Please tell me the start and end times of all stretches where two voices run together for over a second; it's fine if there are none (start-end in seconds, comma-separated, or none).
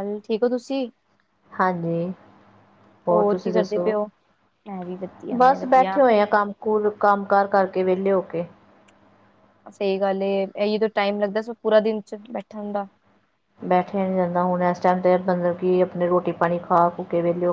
none